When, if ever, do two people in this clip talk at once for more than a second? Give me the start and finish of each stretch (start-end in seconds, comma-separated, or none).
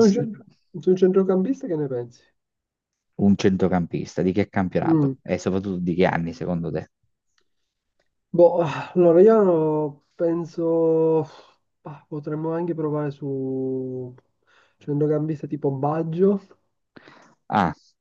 none